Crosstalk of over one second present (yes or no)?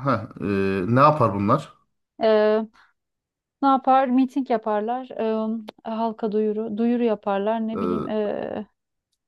no